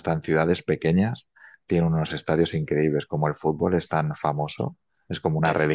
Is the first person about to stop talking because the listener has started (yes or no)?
no